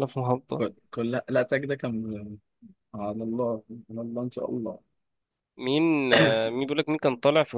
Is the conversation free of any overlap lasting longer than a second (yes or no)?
yes